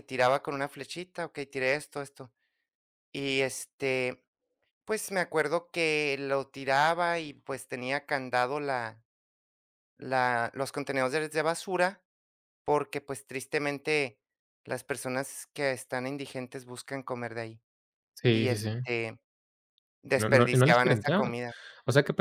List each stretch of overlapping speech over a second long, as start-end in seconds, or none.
20.1-21.4